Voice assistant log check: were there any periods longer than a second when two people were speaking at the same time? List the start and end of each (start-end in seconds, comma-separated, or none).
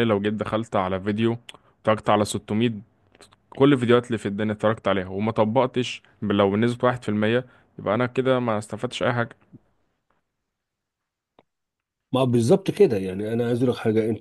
none